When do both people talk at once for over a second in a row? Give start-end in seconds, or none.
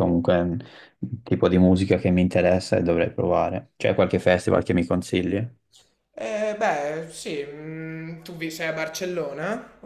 none